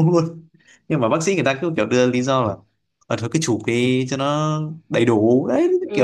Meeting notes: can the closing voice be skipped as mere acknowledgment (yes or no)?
no